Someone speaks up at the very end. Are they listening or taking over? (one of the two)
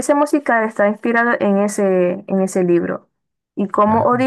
listening